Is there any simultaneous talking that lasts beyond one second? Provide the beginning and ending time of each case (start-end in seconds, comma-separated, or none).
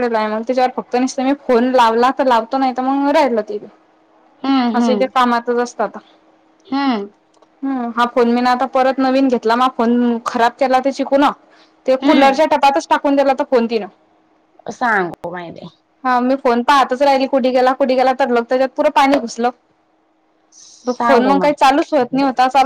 20.9-22.2